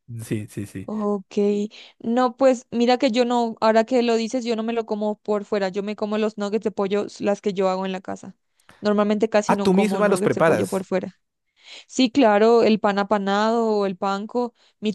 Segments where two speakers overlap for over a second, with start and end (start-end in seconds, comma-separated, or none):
9.5-10.9